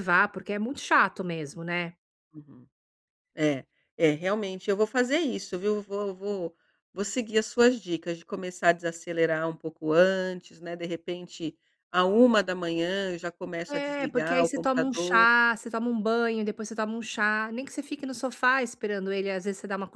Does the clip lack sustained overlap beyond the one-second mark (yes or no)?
no